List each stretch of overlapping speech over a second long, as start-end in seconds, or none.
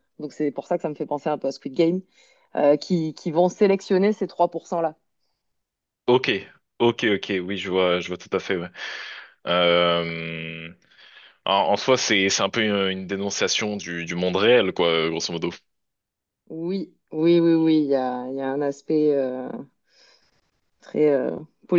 none